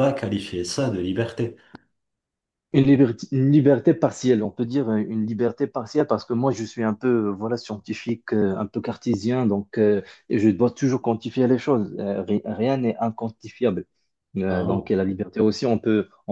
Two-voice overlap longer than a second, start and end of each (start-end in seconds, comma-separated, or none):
none